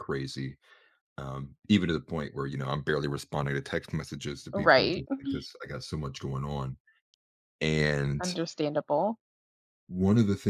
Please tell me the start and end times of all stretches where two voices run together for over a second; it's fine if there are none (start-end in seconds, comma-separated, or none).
none